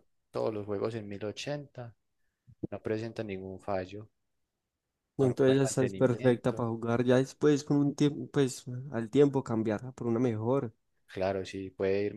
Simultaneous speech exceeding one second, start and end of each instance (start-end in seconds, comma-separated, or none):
5.2-6.7